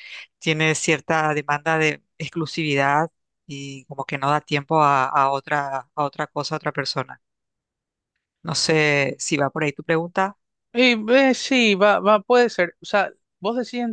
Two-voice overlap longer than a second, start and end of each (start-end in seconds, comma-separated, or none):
none